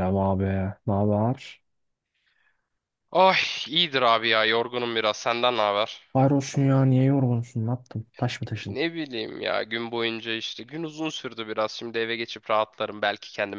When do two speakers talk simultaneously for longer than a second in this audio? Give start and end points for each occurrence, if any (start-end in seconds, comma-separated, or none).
none